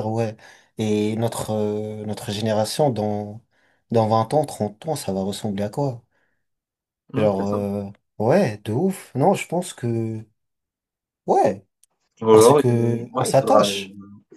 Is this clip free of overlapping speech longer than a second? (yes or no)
no